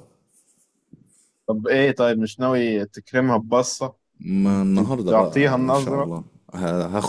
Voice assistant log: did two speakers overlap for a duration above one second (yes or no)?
yes